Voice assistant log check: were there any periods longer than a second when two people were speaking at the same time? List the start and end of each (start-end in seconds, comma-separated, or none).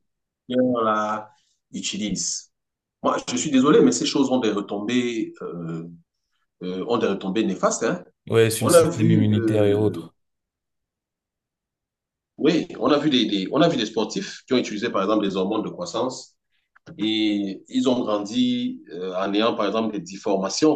8.6-10.1